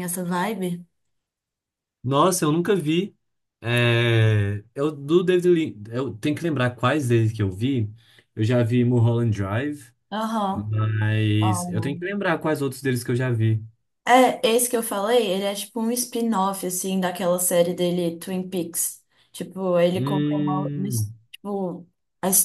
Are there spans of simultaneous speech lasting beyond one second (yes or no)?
yes